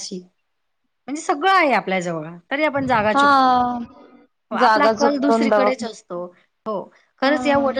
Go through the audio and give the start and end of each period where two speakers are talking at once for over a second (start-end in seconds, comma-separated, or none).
4.6-5.8